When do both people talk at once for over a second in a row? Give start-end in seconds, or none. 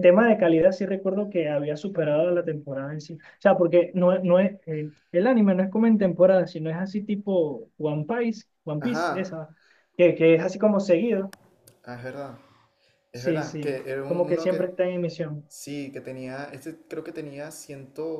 13.1-14.6